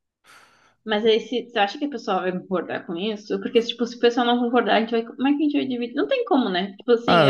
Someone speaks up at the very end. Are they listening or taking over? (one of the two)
taking over